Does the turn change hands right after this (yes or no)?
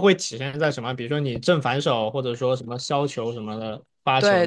yes